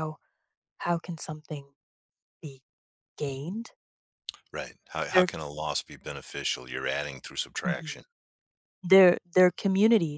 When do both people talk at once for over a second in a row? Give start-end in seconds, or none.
none